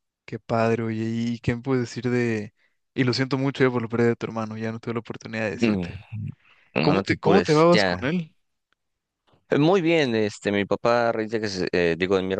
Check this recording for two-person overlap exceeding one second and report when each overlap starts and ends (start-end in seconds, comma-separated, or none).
6.8-8.1